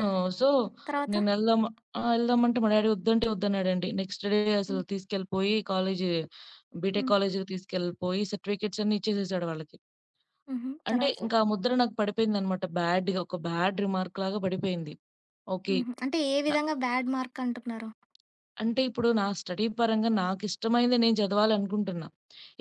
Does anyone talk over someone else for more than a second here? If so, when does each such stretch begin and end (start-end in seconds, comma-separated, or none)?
none